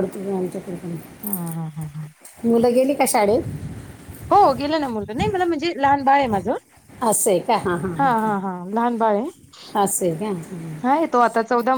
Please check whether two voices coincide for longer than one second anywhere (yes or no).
no